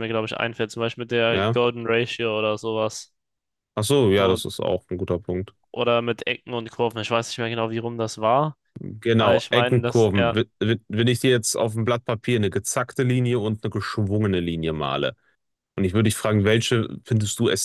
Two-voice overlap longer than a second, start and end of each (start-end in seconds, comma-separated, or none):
9.2-10.4